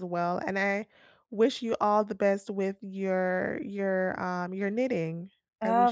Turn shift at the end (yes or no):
yes